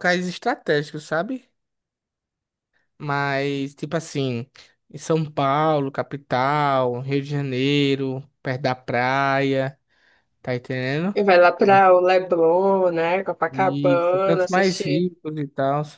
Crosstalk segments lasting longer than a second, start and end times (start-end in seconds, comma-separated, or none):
13.5-15.1